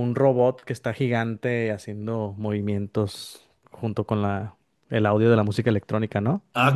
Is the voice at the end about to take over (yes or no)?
yes